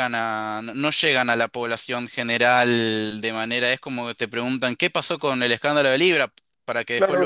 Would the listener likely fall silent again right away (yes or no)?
no